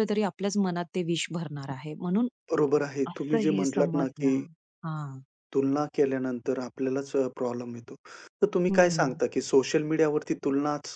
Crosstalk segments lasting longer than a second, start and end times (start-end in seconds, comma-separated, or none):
3.1-4.3